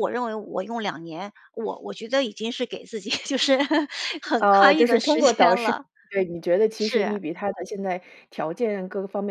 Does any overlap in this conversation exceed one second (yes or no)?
yes